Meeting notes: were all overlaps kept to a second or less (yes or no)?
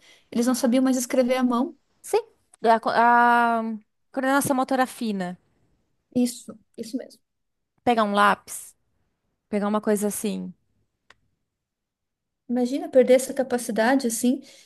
yes